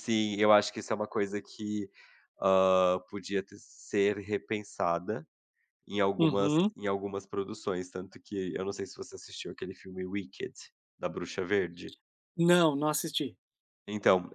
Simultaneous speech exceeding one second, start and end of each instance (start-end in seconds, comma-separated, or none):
none